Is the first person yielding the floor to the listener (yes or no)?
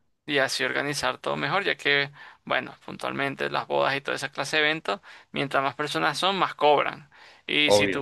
no